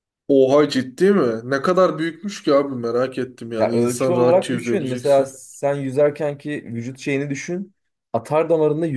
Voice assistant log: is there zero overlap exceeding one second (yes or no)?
no